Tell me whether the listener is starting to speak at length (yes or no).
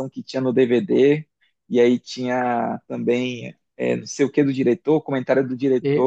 yes